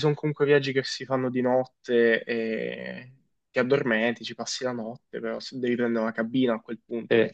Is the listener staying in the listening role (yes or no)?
yes